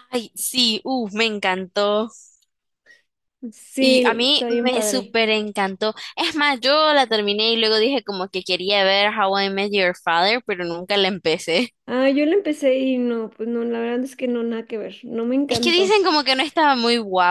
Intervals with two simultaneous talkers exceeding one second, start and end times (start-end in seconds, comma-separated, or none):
3.8-5.2